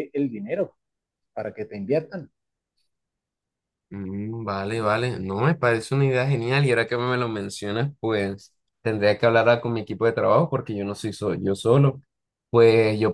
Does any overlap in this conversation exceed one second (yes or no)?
no